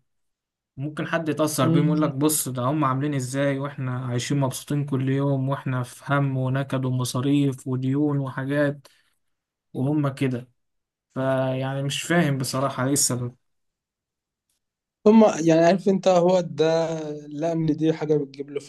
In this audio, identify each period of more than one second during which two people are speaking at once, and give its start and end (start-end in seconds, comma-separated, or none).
none